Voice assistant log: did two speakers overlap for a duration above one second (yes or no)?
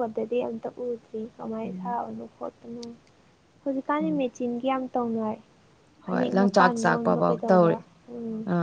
yes